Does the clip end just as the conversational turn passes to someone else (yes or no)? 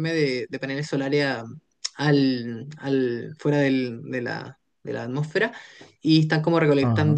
no